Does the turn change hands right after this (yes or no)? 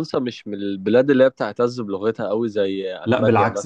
yes